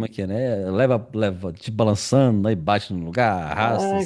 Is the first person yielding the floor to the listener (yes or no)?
yes